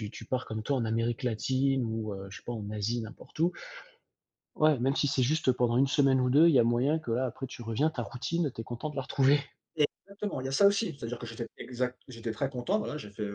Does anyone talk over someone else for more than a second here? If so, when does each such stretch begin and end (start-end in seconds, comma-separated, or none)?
none